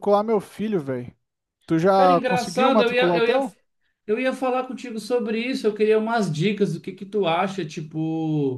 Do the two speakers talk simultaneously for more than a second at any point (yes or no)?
yes